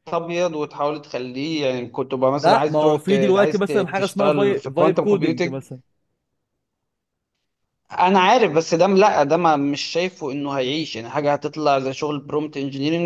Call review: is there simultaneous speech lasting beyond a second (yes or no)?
yes